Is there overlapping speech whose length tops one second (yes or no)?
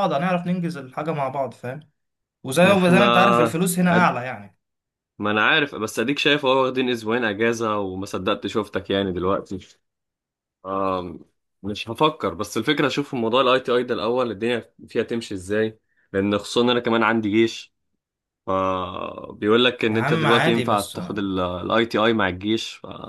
yes